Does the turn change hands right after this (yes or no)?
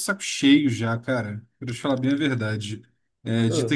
no